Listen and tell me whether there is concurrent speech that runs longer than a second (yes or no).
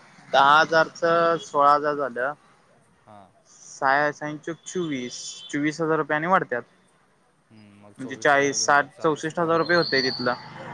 yes